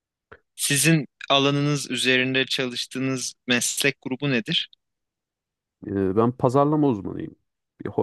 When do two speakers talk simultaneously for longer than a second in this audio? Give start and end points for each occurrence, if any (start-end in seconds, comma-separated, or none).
none